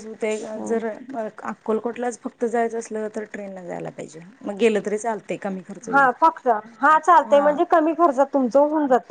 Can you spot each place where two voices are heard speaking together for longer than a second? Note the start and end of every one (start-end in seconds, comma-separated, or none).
none